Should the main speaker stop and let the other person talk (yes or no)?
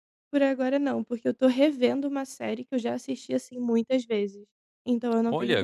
no